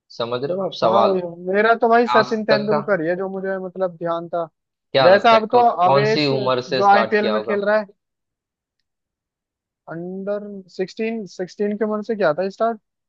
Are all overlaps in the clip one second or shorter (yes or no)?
no